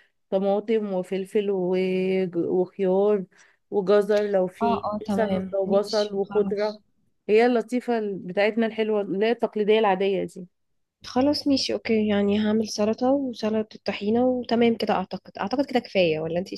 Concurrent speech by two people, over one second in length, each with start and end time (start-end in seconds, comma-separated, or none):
4.6-6.6